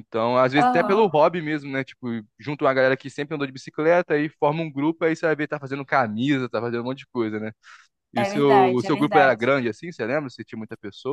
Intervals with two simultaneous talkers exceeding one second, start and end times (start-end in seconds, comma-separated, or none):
8.2-9.5